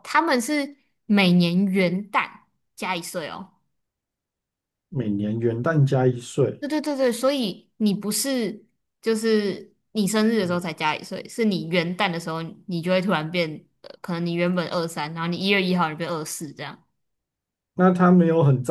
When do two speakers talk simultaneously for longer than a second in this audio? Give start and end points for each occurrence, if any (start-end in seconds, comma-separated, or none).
none